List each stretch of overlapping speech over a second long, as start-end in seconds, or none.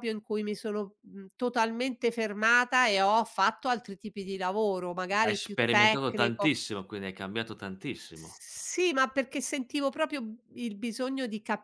5.2-6.5